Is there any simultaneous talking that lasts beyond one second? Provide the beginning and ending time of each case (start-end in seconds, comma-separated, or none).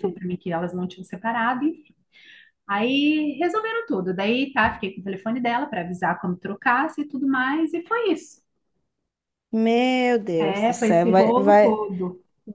10.4-11.8